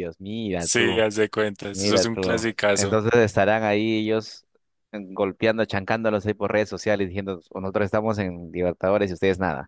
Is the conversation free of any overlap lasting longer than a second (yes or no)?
no